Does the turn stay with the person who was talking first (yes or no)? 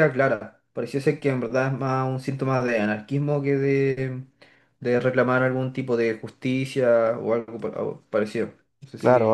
no